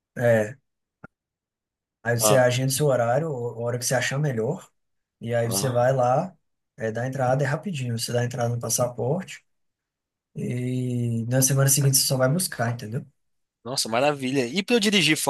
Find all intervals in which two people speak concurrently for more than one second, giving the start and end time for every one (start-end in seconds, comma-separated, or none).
none